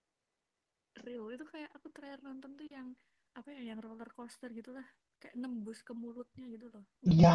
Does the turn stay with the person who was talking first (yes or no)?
no